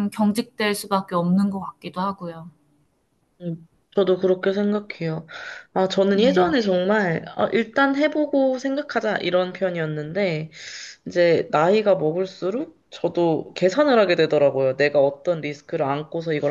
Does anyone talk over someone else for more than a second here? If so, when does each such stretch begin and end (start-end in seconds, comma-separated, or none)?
none